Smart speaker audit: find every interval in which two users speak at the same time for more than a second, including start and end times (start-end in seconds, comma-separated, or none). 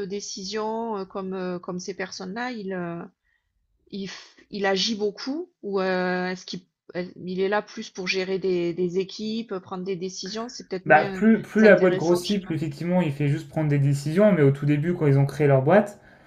10.8-12.6